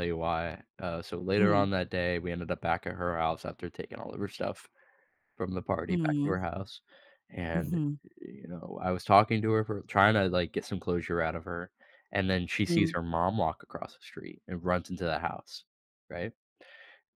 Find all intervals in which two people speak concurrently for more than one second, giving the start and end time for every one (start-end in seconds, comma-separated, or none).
none